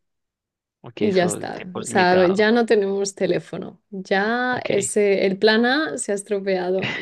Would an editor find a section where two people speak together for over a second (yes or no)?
yes